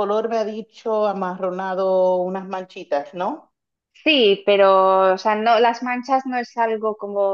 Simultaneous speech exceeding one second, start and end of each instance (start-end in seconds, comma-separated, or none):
none